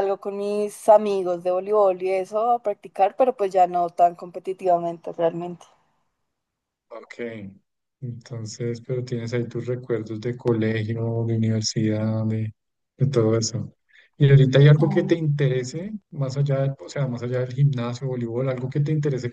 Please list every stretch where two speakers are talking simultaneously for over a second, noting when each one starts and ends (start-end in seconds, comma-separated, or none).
none